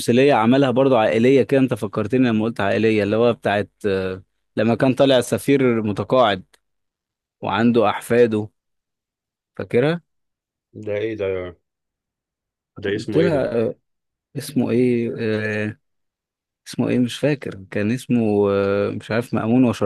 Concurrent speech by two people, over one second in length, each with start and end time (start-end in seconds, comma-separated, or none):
none